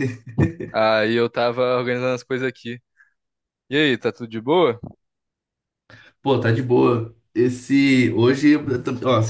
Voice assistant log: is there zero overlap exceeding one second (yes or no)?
yes